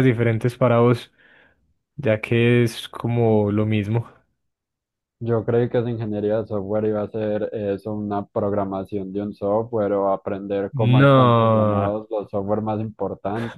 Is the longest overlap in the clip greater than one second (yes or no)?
yes